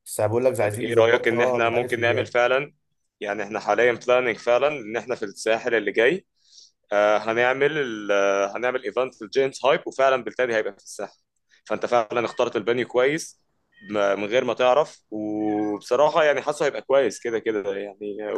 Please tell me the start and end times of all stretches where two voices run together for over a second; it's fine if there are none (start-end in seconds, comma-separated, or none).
0.6-2.3